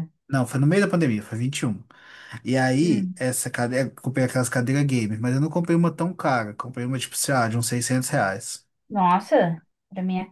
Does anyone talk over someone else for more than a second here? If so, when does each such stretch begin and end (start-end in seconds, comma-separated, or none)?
none